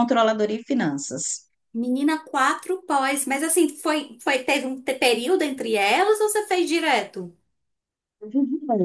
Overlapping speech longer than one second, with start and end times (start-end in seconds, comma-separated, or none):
none